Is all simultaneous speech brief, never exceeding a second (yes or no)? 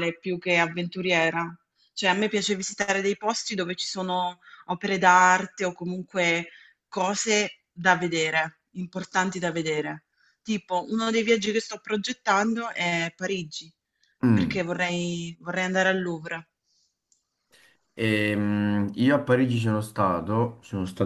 yes